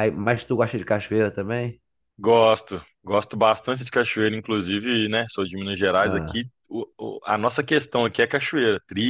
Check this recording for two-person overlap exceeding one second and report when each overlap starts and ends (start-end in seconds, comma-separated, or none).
none